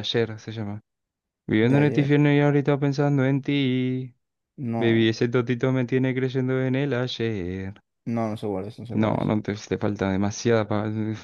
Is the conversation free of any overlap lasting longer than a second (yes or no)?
yes